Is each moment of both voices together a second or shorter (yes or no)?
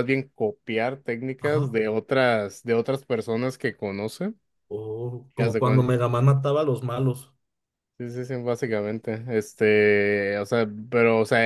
yes